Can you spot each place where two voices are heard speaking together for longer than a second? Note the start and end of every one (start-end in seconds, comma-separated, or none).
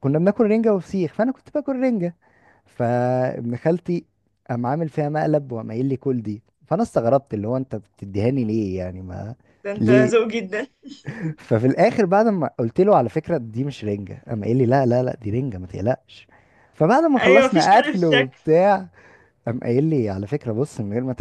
17.2-18.4